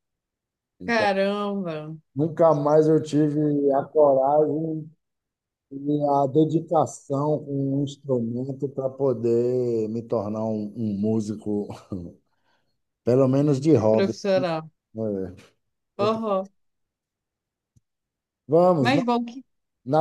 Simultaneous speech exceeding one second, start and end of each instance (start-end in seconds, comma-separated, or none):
none